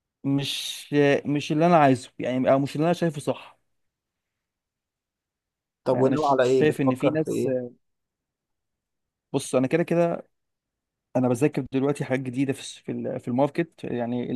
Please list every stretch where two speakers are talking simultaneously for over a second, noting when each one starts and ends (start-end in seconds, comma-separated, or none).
5.9-7.5